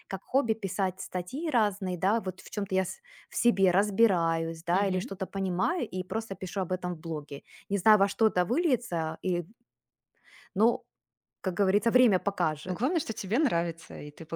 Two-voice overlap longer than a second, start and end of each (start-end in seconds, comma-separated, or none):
none